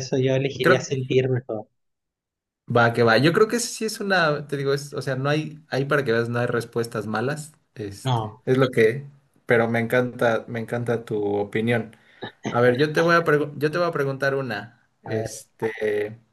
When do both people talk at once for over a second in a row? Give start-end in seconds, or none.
none